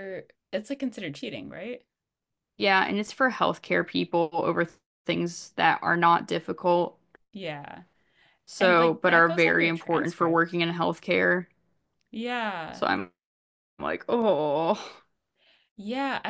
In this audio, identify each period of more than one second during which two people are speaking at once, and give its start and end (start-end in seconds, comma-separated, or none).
8.6-10.6